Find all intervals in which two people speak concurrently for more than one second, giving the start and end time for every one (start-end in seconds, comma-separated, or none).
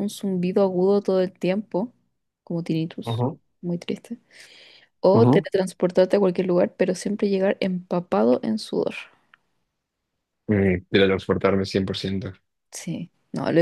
none